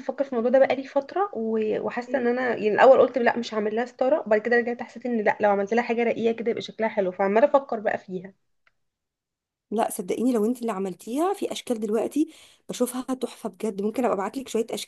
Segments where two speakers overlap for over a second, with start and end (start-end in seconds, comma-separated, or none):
none